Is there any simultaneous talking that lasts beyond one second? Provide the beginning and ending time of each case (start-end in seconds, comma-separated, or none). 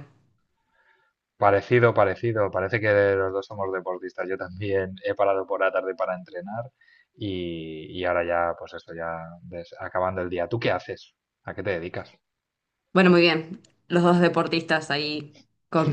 none